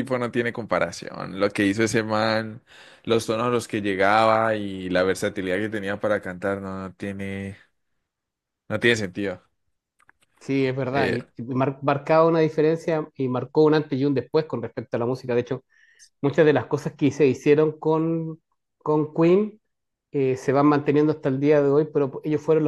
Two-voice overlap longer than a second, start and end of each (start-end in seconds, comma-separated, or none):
none